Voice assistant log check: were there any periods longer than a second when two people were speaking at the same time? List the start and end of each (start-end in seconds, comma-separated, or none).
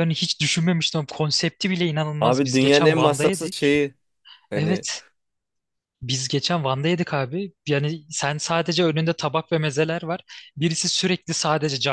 2.2-3.7